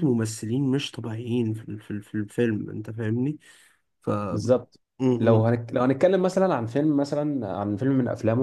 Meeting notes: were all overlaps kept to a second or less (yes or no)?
yes